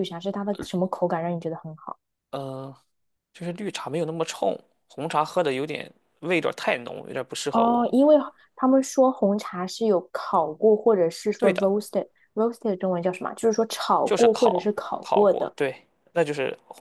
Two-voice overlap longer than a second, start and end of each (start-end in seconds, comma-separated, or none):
14.0-15.5